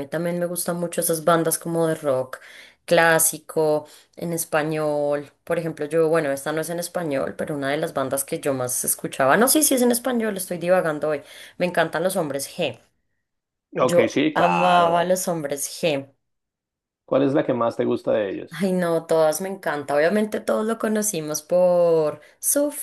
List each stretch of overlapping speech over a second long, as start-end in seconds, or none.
13.8-15.2